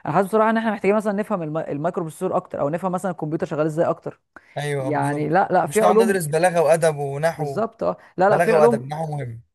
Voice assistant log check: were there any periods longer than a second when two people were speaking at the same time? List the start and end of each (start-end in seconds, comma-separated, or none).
4.8-6.3